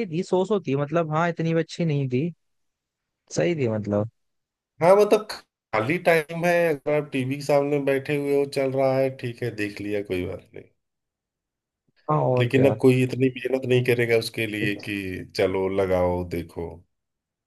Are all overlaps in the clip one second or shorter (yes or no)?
yes